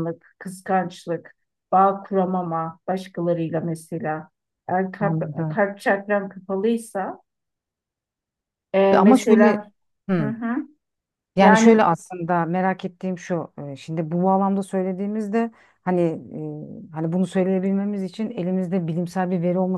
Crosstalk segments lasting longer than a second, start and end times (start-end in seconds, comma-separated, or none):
none